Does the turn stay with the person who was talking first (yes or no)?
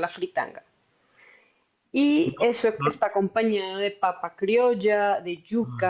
yes